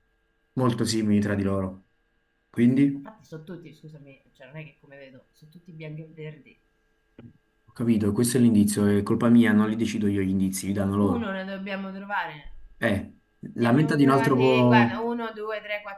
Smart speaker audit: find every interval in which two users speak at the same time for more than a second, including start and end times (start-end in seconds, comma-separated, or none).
13.6-15.0